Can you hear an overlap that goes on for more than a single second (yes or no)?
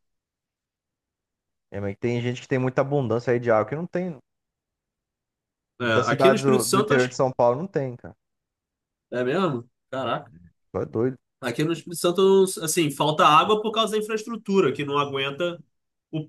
yes